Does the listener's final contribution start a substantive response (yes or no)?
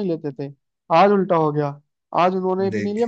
no